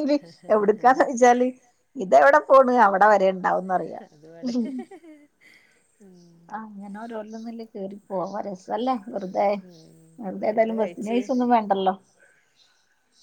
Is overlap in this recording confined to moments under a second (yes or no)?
yes